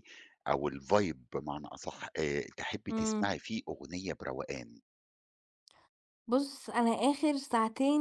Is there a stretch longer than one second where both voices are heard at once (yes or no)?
no